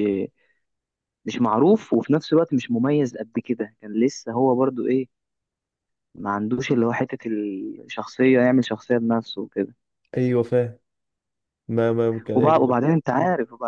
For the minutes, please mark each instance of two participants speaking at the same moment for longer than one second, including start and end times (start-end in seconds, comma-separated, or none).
none